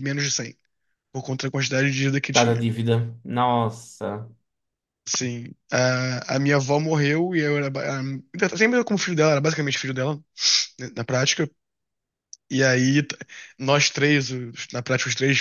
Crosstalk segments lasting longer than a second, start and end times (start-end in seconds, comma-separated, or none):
none